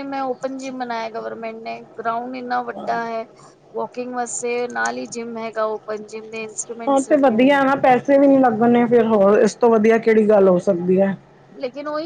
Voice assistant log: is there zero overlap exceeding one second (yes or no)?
yes